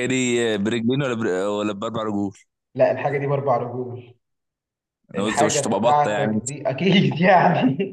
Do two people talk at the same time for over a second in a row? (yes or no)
yes